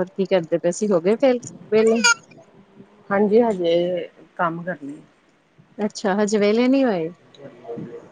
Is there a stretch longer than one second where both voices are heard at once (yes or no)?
no